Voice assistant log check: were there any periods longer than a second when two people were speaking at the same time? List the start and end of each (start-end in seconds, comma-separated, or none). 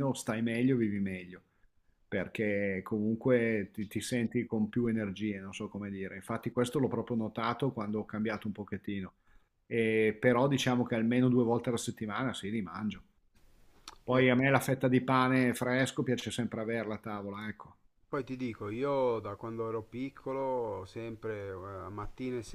none